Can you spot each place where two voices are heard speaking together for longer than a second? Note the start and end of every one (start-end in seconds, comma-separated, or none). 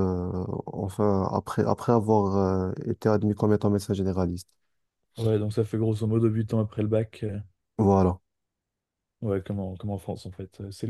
none